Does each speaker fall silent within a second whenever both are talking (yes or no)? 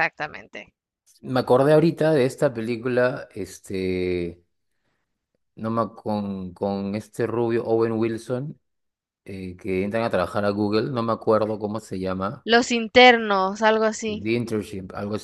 yes